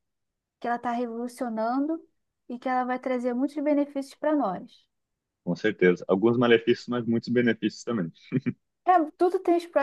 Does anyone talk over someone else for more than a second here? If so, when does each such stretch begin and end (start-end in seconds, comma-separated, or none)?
none